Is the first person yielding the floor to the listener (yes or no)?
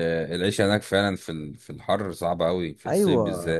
yes